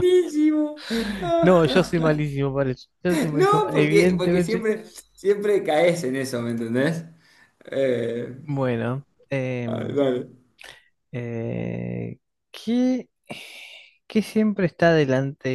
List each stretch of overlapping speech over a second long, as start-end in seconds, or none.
3.3-4.7